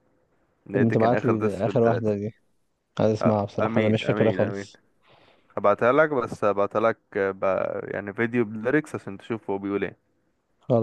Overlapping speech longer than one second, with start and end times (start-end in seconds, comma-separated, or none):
0.7-2.1, 3.2-4.7